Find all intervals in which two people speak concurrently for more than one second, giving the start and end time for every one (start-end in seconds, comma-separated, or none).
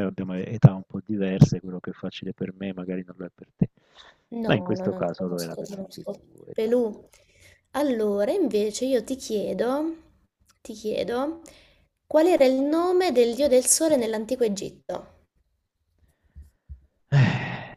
4.4-7.1